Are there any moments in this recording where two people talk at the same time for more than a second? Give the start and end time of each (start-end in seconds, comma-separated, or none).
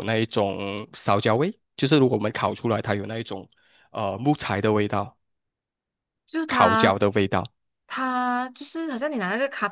none